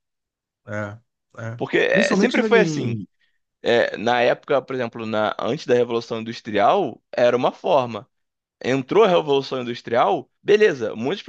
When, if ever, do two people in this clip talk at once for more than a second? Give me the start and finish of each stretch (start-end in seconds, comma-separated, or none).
1.5-3.0